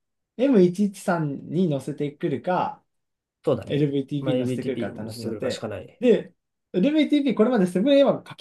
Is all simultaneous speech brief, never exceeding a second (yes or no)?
no